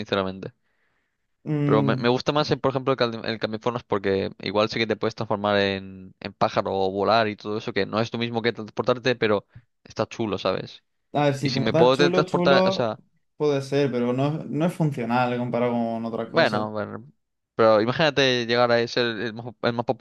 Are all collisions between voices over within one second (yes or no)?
no